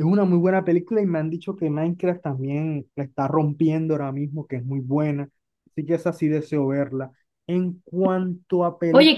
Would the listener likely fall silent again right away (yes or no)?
no